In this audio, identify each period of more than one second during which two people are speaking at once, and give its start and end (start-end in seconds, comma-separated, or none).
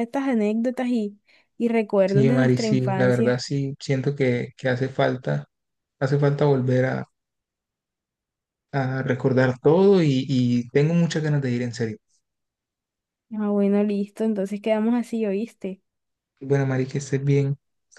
2.1-3.5